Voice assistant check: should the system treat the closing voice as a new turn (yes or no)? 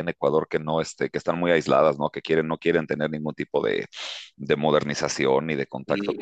yes